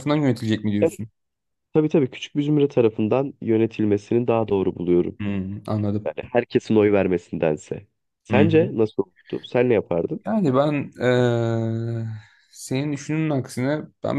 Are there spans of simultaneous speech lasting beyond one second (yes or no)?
no